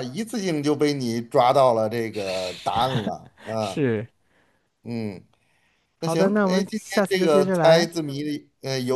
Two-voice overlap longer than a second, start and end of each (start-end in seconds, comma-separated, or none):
6.0-7.9